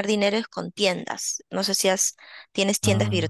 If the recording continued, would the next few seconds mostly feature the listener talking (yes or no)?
no